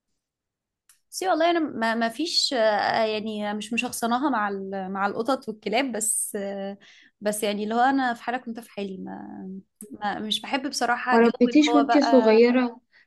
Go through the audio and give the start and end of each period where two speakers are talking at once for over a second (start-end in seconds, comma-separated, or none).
11.1-12.4